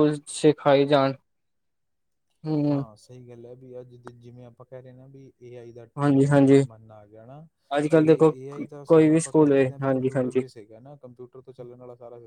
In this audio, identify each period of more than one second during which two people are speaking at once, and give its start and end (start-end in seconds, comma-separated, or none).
8.8-10.4